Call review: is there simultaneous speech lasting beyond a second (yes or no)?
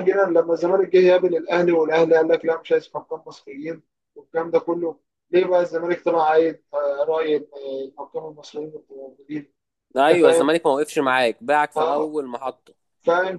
no